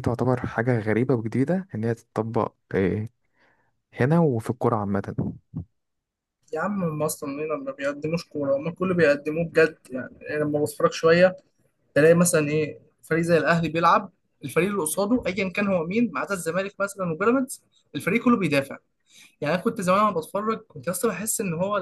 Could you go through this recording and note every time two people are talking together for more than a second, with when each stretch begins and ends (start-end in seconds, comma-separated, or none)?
none